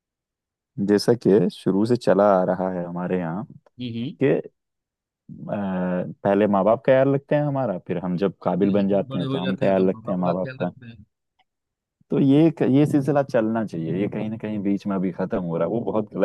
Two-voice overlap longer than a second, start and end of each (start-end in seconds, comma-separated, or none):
8.6-10.7